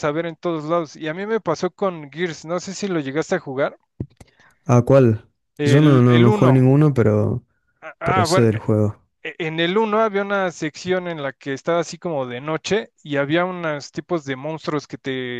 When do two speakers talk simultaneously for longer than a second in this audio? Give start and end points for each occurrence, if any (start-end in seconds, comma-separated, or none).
5.6-6.8